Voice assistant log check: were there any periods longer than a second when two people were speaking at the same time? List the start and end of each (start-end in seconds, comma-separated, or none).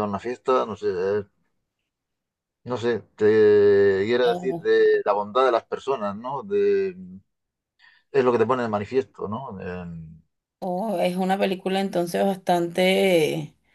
none